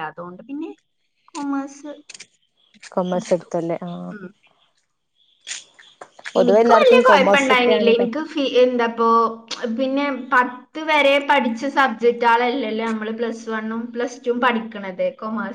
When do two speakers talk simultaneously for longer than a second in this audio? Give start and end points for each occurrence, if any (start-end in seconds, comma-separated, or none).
6.4-8.2